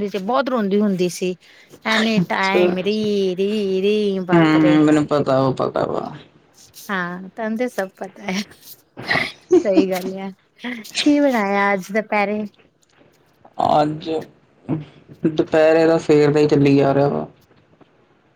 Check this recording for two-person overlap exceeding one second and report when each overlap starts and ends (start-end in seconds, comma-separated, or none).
none